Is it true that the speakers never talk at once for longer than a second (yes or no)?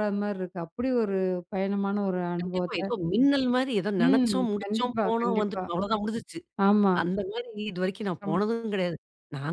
no